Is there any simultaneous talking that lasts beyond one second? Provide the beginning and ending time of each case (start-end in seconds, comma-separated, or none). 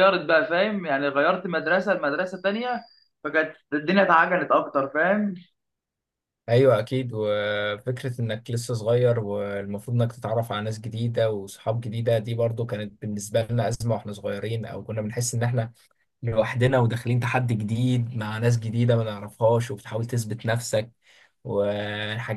none